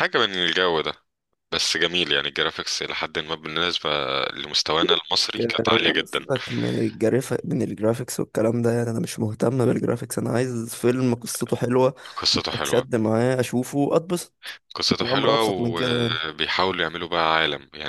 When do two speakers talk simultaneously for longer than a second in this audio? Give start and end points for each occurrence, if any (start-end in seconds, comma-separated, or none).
15.0-16.2